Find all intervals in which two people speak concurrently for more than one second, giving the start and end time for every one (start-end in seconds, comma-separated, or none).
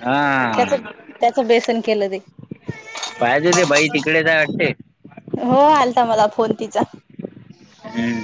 none